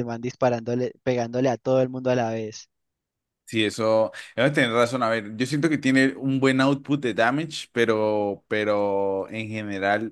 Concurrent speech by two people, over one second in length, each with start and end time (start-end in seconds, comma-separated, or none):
none